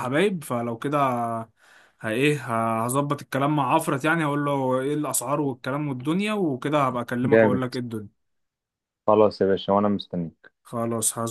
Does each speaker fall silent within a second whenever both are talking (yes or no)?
yes